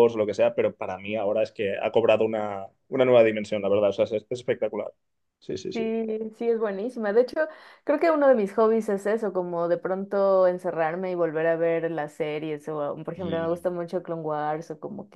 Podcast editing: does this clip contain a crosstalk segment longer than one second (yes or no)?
no